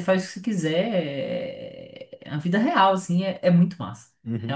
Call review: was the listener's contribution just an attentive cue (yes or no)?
no